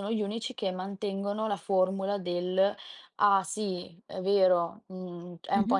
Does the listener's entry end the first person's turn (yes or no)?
no